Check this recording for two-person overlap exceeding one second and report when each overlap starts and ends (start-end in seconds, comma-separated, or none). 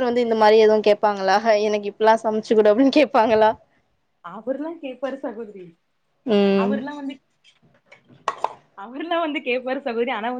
none